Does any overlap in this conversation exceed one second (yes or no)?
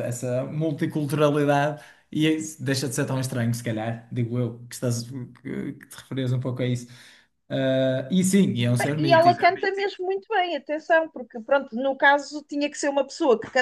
no